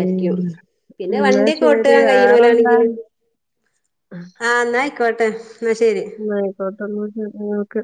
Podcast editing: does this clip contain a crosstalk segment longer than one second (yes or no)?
yes